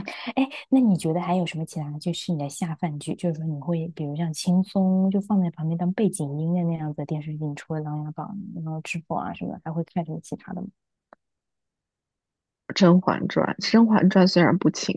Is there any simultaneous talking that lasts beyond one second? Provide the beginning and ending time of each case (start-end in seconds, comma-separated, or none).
none